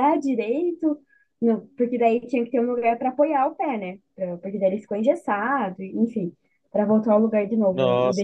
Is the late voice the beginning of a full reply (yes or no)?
yes